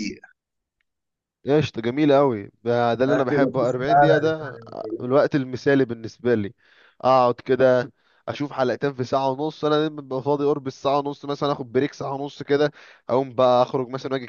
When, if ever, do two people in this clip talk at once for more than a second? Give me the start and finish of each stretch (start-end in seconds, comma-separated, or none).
3.1-4.5